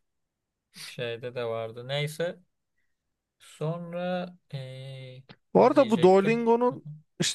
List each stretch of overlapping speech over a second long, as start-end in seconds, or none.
5.5-6.8